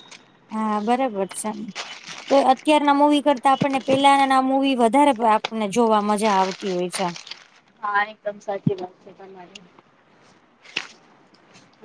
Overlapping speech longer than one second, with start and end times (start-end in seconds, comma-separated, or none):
none